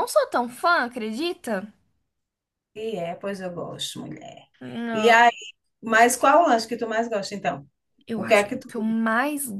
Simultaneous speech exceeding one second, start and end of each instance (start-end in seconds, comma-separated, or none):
none